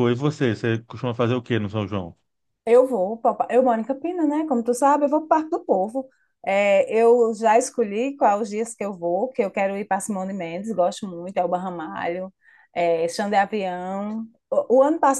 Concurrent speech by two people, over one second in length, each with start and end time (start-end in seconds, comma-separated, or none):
none